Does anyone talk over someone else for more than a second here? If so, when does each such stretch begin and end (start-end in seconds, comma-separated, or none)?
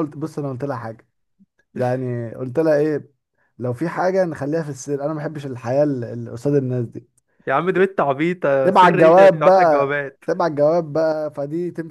8.6-10.2